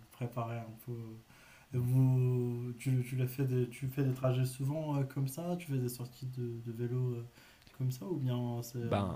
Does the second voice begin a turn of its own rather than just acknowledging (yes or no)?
no